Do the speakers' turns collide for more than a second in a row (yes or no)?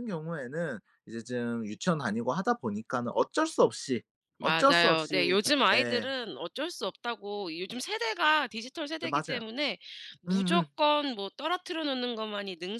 yes